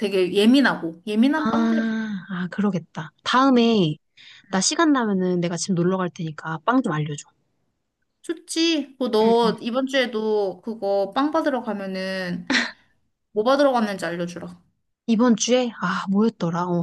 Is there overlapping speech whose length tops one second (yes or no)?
no